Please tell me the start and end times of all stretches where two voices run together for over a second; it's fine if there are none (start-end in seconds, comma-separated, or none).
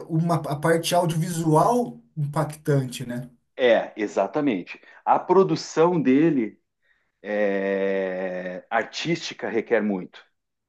none